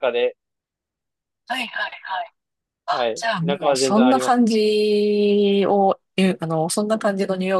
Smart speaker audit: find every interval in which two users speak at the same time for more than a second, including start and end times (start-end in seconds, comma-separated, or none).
2.9-4.5